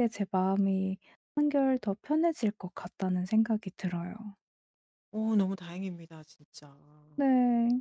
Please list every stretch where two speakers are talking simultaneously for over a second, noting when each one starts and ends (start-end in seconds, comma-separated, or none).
none